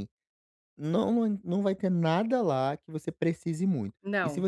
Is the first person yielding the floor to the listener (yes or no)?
no